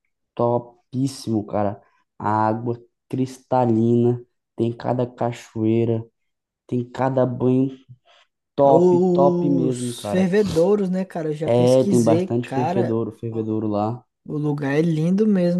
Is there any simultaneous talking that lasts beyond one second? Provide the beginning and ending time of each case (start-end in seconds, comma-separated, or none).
8.6-10.3, 11.5-13.5